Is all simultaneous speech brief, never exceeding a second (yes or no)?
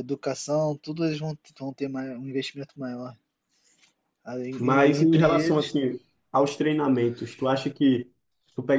no